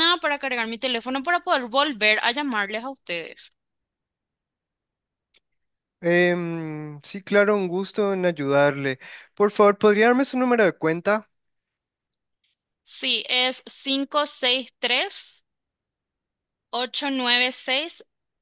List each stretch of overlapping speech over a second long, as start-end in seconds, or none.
none